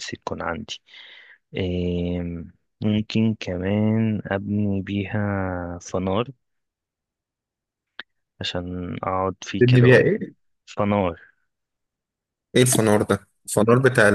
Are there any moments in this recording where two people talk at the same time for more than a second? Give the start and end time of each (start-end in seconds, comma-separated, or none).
none